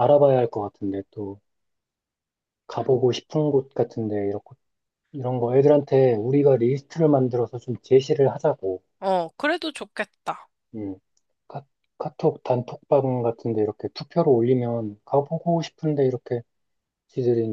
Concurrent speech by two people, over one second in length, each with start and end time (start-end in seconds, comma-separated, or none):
none